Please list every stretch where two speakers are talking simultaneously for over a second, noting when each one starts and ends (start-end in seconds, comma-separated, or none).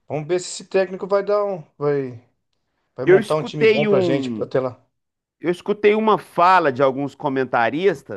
3.0-4.5